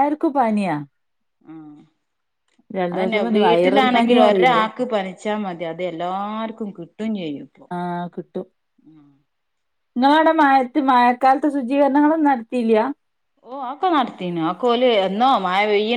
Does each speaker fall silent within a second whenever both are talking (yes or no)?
no